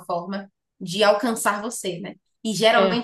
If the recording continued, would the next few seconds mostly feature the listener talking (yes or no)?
no